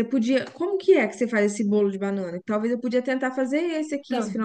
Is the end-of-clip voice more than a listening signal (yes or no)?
yes